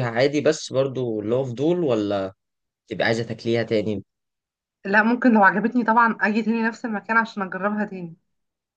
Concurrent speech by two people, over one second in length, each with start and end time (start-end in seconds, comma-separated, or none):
none